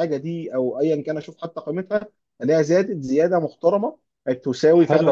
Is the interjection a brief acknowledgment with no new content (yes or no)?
no